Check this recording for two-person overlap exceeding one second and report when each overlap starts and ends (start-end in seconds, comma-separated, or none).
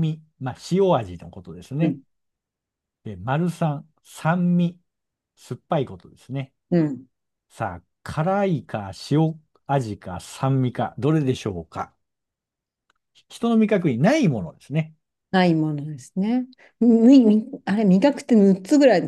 none